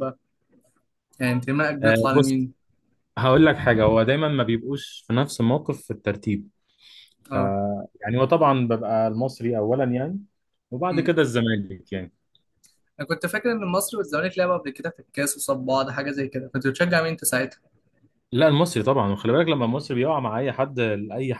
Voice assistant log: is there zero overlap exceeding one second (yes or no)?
yes